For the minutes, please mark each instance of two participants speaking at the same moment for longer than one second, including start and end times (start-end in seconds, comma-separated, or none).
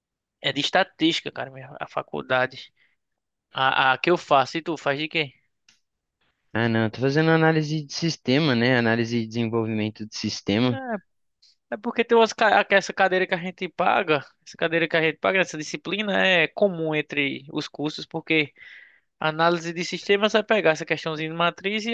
none